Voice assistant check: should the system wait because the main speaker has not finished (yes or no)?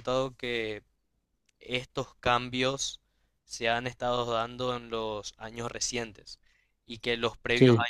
yes